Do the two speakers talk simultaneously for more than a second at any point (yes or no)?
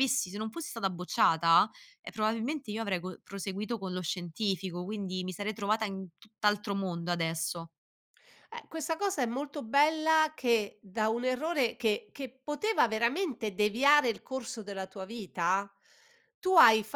no